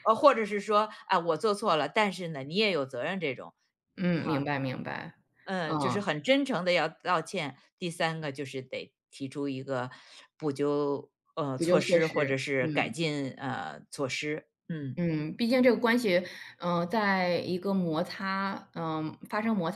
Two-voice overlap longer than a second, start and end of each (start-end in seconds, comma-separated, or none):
11.6-12.9